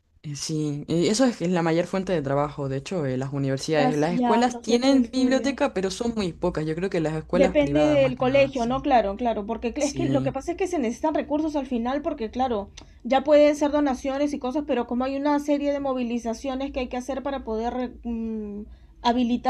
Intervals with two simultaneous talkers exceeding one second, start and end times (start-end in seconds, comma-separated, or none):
3.7-5.6, 7.3-8.8